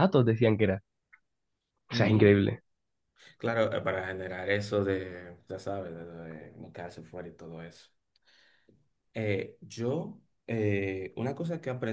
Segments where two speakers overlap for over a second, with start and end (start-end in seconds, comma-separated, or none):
none